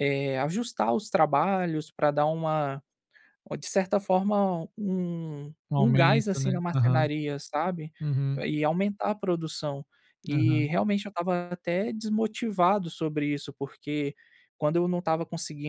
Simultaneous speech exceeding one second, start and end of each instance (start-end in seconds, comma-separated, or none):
5.7-7.1